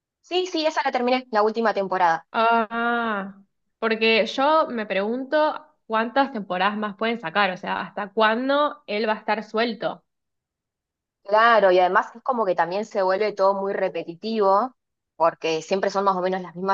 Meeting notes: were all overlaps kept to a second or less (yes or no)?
yes